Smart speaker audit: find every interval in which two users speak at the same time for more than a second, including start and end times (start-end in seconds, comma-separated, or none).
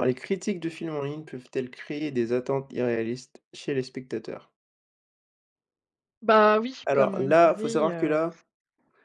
6.8-8.2